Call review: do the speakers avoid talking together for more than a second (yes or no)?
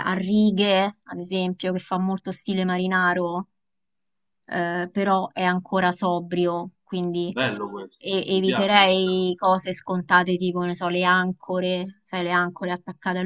no